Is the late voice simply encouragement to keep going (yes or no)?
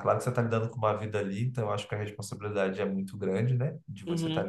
no